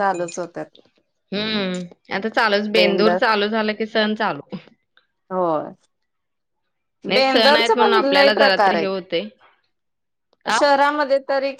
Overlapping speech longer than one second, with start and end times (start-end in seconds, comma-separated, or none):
7.1-9.0